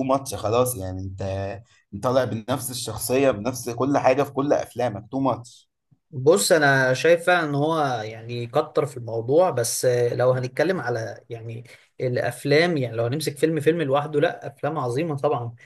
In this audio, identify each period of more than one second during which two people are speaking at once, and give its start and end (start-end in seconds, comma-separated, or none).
none